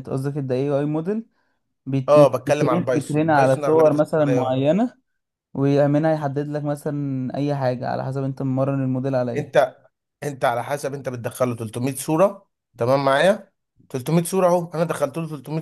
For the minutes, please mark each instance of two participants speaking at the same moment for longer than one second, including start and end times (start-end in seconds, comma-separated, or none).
2.1-4.5